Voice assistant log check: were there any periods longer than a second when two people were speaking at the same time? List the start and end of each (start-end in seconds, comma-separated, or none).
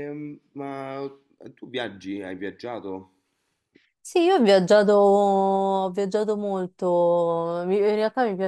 none